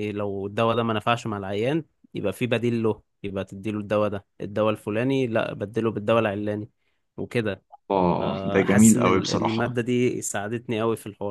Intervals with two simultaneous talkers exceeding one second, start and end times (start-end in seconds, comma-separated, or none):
8.2-9.6